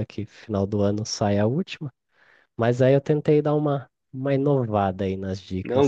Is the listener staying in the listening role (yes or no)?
no